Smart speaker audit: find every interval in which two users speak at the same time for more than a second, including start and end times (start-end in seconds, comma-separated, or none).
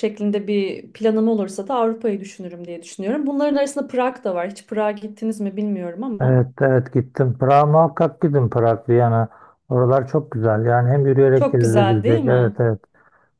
11.3-12.6